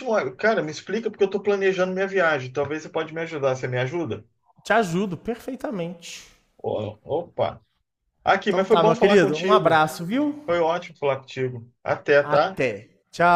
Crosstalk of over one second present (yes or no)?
yes